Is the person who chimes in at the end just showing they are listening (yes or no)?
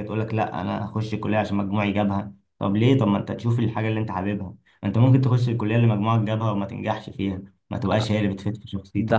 no